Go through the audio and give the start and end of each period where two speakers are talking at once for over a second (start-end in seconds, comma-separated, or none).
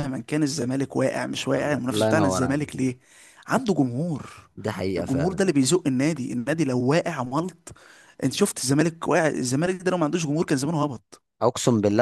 1.6-2.8